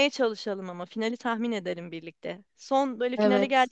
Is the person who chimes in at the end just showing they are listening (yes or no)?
yes